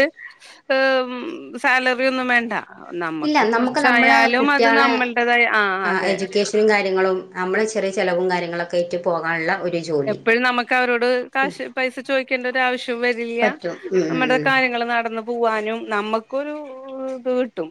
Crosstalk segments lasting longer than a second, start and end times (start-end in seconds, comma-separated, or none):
3.3-4.9